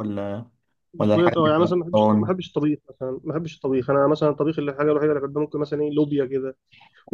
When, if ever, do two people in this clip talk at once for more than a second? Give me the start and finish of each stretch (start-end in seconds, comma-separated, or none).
1.0-2.3